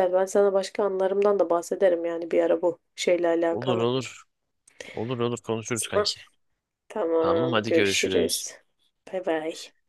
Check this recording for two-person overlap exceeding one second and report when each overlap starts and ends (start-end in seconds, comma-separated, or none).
7.2-8.5